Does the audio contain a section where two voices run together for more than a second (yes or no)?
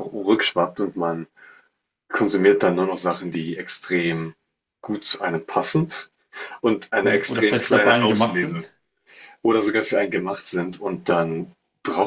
yes